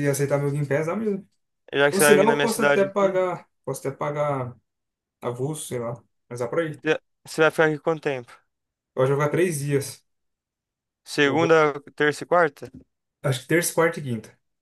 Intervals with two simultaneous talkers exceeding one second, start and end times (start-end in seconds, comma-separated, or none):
1.9-3.2